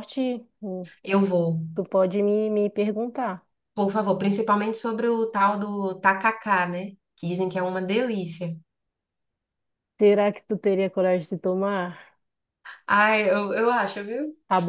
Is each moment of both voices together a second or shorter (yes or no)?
yes